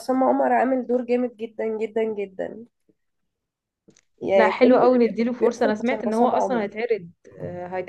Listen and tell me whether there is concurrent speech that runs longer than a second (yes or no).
yes